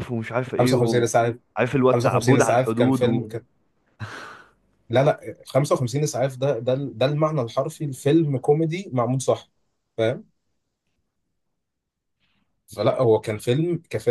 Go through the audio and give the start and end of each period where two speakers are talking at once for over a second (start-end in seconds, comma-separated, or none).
1.9-3.3